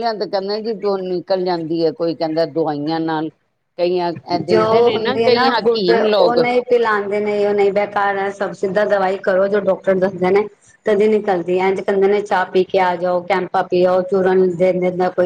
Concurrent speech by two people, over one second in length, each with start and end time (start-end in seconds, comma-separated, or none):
4.5-6.4